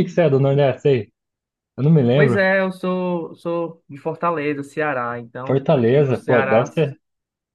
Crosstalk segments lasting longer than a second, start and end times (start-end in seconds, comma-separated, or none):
5.5-6.7